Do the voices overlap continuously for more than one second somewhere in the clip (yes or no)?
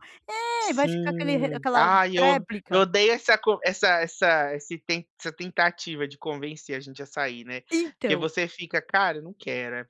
yes